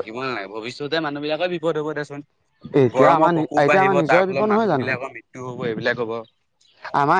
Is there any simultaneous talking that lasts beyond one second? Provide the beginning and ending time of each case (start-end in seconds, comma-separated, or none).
2.9-4.9